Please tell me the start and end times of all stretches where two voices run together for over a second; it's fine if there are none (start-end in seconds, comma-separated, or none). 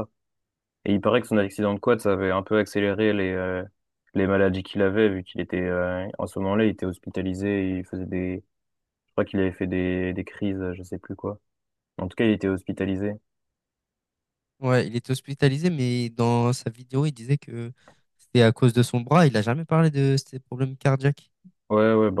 none